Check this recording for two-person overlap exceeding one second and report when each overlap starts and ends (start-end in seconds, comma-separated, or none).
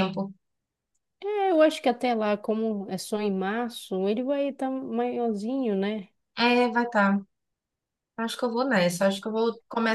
none